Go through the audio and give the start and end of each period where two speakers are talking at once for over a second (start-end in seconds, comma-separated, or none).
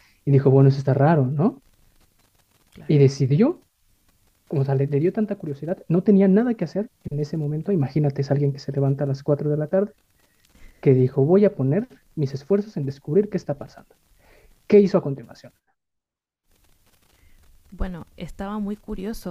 none